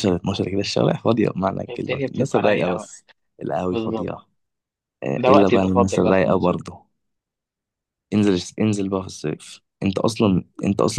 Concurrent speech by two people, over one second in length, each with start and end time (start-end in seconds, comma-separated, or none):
1.7-2.9, 5.2-6.6